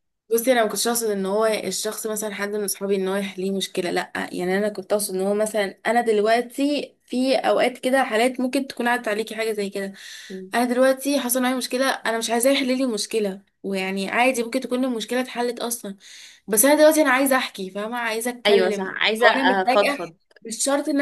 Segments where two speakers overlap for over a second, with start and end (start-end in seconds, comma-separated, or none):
18.5-20.0